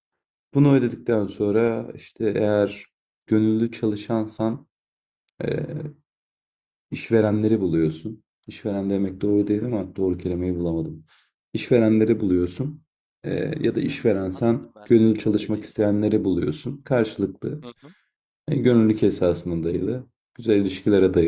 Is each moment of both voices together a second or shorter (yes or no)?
no